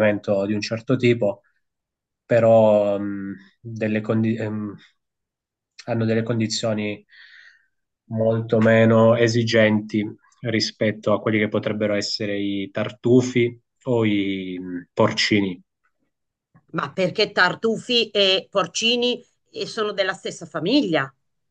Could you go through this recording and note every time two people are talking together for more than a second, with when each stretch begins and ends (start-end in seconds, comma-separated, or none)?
none